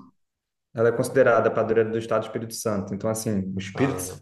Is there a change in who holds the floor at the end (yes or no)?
no